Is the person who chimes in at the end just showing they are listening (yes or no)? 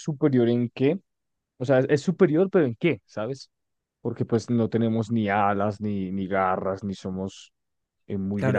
no